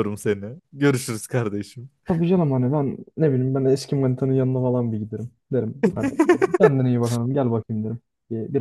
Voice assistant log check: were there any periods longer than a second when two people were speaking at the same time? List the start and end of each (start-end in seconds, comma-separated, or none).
none